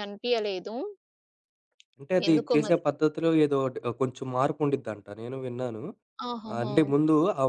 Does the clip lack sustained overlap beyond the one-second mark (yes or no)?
yes